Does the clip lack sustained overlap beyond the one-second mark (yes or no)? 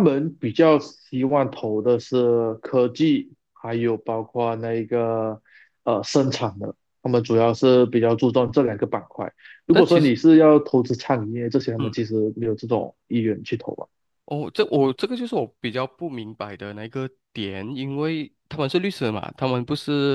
yes